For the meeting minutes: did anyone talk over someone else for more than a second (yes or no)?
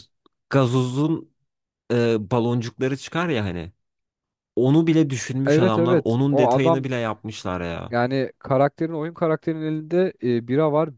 yes